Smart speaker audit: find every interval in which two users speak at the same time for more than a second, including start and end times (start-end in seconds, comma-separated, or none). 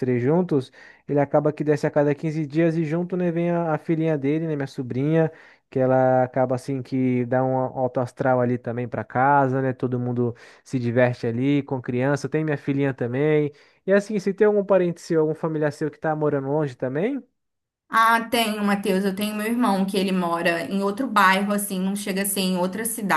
none